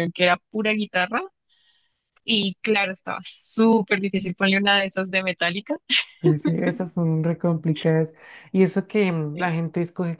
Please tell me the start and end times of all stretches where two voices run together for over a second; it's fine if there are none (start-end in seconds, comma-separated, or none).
none